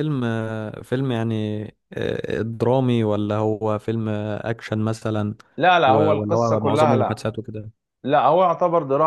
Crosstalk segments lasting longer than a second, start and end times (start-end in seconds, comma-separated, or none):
5.8-7.2